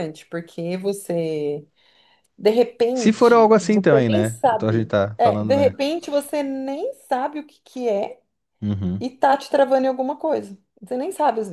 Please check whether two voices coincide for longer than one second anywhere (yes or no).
yes